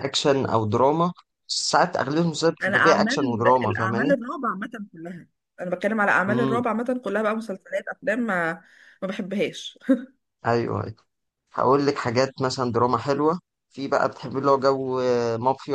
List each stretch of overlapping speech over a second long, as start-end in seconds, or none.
2.6-4.1